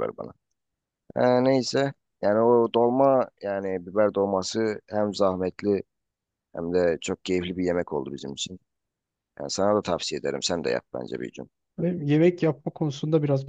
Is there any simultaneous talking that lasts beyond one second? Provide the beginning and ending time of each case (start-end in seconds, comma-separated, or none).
none